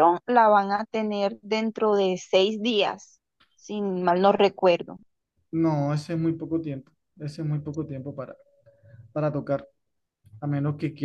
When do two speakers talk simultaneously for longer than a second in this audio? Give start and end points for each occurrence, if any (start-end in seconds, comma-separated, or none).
none